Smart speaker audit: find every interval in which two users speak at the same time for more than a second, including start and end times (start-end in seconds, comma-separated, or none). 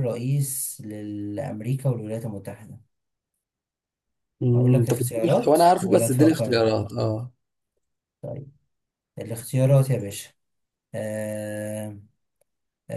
4.5-6.6